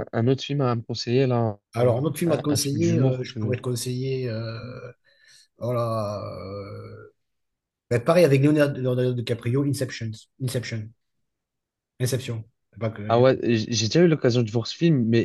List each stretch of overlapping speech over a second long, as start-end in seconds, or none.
1.7-3.6